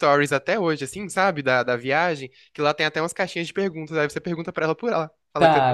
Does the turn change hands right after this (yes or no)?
yes